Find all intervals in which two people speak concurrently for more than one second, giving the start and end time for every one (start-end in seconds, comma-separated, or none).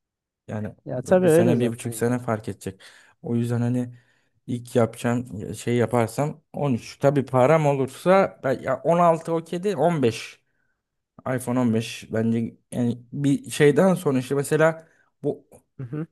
0.8-2.1